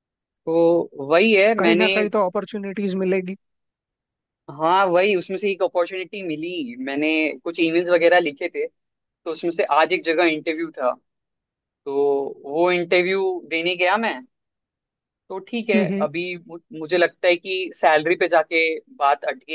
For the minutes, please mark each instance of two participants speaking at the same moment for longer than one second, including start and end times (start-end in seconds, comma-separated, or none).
none